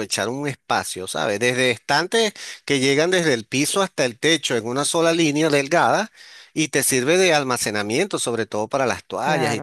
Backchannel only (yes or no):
no